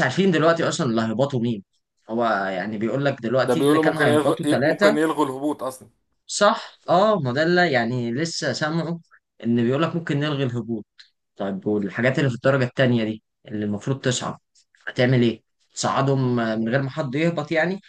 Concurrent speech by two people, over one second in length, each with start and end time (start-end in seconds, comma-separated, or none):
3.4-5.0